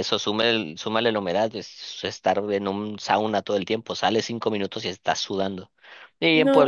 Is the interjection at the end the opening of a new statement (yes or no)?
no